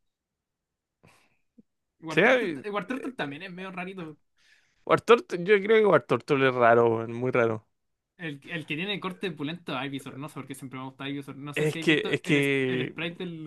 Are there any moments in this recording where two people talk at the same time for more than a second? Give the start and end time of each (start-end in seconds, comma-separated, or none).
11.6-12.9